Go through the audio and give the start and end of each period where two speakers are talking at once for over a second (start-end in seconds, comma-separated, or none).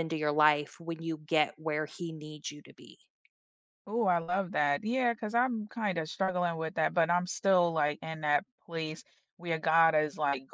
none